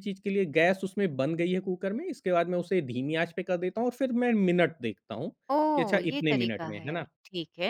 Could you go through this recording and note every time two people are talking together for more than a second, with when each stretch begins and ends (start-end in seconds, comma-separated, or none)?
5.7-7.1